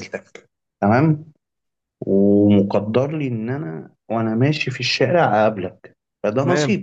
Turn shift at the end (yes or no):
no